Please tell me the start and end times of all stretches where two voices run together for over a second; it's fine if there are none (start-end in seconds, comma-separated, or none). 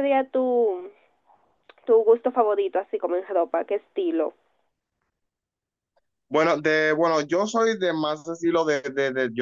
none